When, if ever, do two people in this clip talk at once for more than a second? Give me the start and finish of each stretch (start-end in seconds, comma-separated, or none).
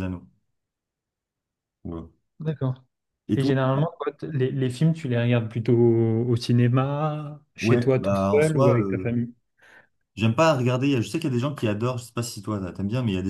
7.6-9.1